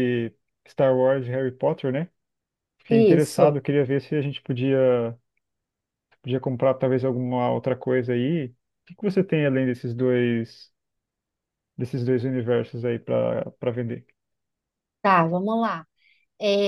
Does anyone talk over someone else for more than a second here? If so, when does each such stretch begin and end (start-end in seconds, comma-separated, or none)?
none